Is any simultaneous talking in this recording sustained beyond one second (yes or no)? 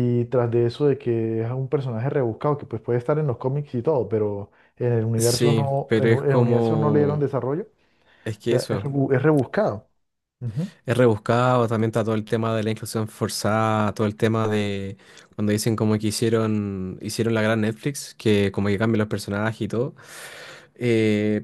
yes